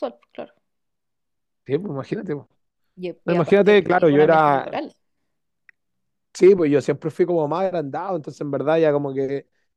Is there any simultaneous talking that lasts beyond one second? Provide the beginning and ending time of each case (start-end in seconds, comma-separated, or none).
3.2-4.7